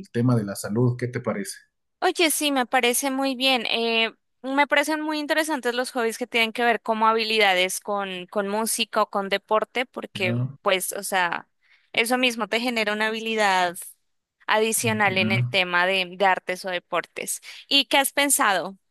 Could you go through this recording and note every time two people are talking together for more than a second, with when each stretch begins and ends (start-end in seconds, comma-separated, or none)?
none